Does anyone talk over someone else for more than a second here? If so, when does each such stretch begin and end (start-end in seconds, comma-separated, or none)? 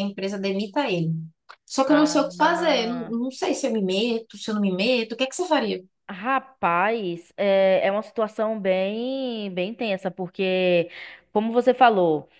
none